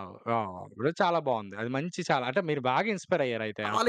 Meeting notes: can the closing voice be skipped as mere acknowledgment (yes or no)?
no